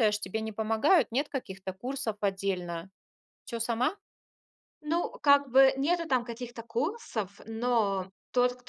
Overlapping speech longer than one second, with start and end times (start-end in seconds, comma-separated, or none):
none